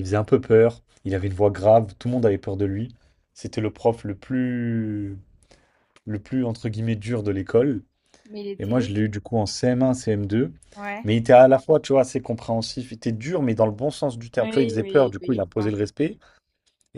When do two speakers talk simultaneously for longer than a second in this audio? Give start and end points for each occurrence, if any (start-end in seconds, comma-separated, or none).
14.4-15.7